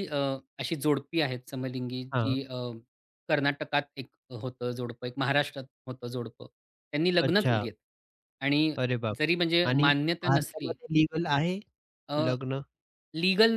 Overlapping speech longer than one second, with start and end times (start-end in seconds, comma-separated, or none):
9.2-10.7